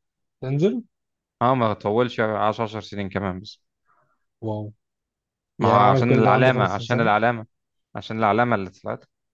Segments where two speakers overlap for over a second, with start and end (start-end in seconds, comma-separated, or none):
5.6-7.1